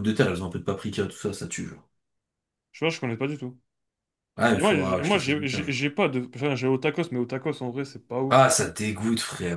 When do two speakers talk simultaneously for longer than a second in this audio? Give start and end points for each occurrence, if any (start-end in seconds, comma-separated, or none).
4.5-5.8